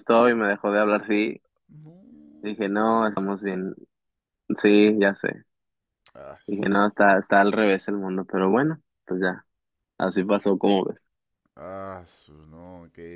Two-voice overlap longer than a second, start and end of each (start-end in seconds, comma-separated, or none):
none